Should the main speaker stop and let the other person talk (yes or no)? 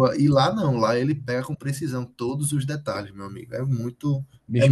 yes